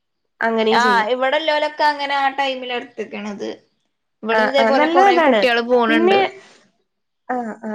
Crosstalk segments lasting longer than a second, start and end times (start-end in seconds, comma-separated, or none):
none